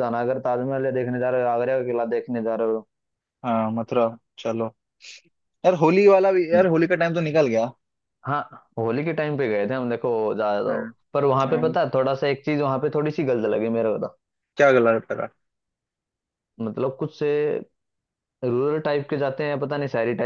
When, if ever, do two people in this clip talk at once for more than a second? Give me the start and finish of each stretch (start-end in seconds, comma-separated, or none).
none